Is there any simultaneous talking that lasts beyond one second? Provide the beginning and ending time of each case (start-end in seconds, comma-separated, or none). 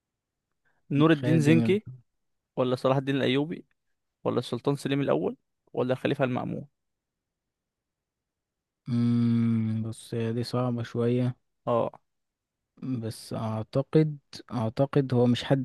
none